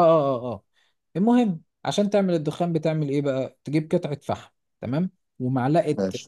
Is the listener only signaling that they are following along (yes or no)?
yes